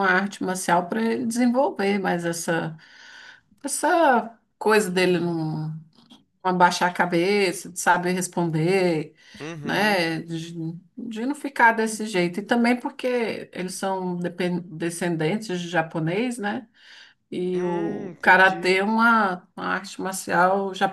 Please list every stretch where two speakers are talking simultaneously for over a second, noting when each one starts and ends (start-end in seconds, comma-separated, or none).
17.5-18.8